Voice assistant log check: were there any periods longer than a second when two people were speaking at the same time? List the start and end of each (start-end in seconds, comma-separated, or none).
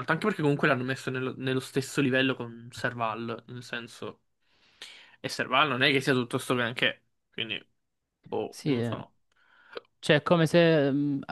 none